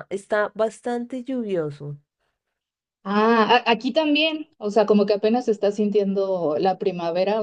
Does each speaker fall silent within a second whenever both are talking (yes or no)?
yes